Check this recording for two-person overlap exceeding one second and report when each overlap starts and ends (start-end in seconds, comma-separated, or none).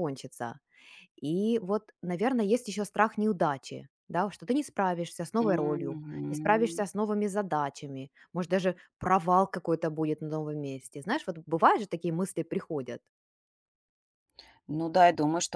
5.4-6.8